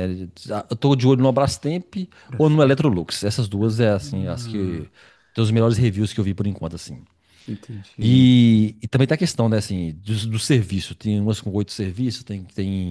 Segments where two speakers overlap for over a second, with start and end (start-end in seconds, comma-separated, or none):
3.6-4.9